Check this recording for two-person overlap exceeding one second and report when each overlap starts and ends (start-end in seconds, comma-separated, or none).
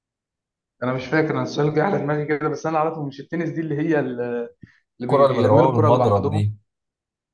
5.0-6.4